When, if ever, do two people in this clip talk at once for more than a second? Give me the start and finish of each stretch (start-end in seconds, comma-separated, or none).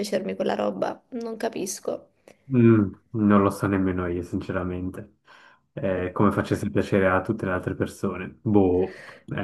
none